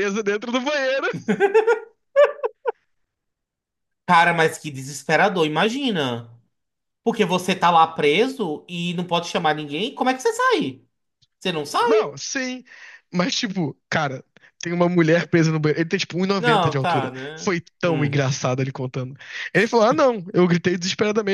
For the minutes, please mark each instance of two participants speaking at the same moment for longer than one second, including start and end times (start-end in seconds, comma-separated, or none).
16.4-18.2